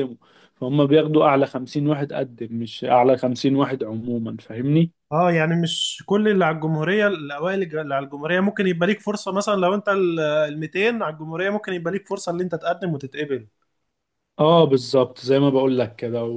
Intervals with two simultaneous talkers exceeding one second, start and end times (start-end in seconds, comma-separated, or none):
none